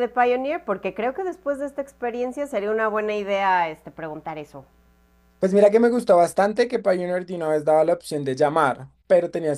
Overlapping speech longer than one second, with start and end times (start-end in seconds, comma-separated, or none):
none